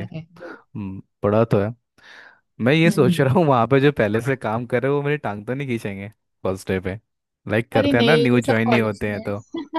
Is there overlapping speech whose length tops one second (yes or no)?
yes